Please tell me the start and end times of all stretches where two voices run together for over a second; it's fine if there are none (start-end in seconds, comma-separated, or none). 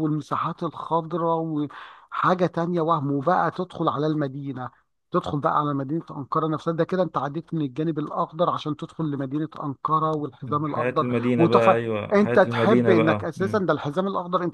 10.7-13.6